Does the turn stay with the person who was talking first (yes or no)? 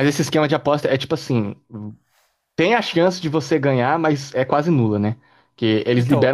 yes